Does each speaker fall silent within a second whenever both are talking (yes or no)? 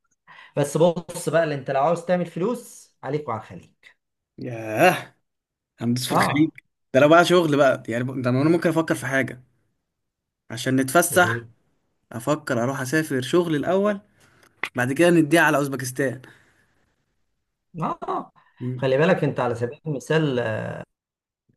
yes